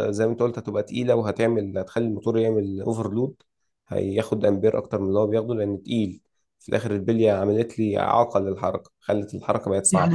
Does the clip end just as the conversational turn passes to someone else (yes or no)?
yes